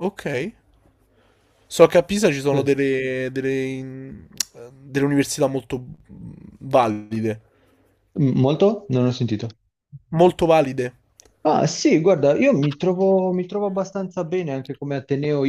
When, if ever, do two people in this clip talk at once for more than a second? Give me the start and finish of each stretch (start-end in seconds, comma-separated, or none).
none